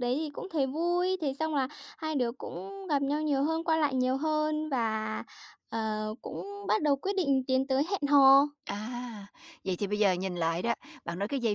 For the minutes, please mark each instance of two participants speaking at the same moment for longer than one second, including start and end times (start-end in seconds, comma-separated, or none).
none